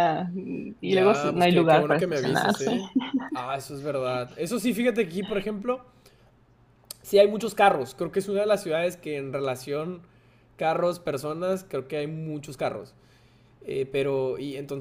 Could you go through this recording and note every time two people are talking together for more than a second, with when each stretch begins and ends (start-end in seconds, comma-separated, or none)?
0.8-2.7